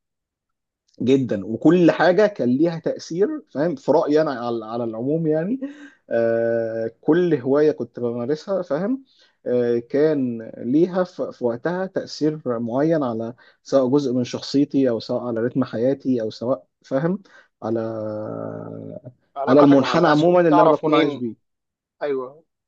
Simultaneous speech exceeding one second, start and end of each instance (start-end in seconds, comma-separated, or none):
19.5-21.2